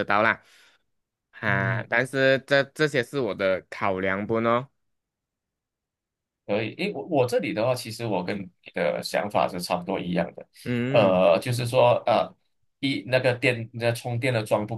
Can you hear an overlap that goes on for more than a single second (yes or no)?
no